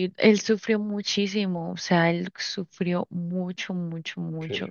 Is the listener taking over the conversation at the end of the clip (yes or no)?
no